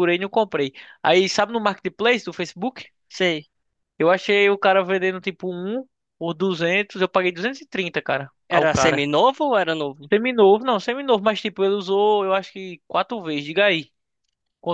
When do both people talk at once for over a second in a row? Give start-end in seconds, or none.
none